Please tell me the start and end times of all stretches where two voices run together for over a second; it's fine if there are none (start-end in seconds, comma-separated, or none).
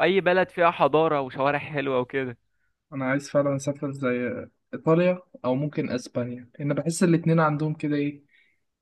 none